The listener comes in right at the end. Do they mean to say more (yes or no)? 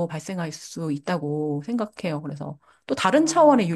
no